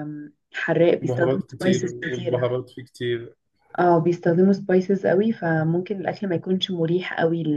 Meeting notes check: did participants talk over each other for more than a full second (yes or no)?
yes